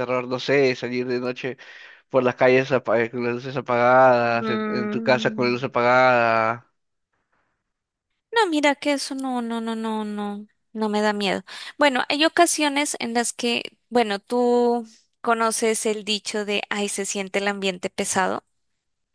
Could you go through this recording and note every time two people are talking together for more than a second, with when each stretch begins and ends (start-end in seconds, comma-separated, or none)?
4.2-5.6